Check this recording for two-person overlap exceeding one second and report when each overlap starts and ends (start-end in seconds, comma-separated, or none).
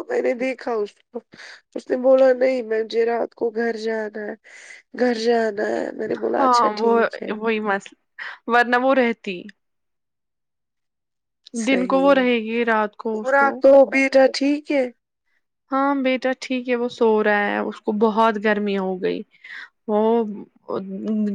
none